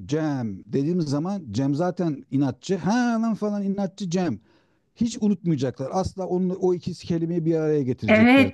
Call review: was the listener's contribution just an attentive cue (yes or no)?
no